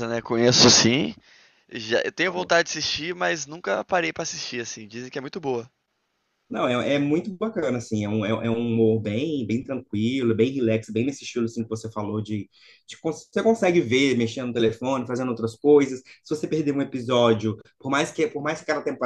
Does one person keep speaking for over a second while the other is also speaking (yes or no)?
no